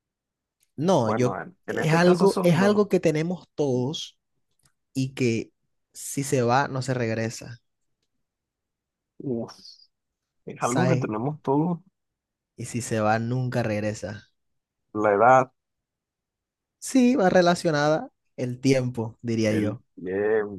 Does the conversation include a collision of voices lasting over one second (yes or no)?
yes